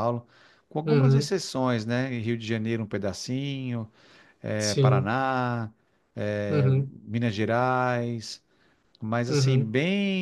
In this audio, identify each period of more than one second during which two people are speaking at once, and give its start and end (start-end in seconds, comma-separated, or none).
none